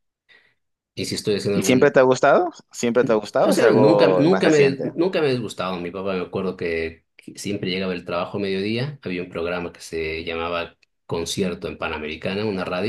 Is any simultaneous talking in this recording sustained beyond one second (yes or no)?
yes